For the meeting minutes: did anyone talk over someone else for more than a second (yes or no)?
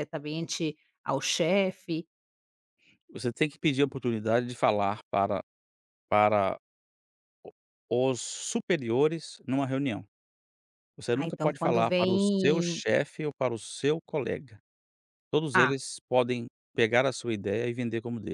yes